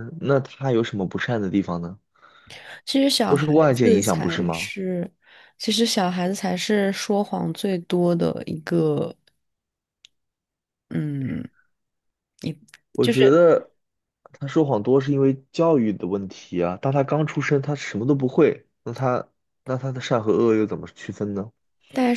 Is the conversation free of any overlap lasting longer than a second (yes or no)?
no